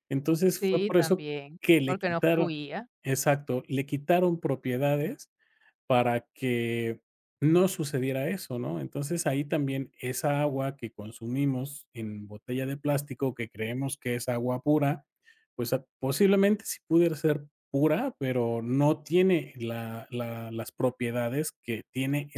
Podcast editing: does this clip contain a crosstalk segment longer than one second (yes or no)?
yes